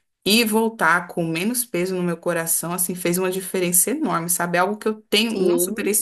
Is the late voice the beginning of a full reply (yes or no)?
no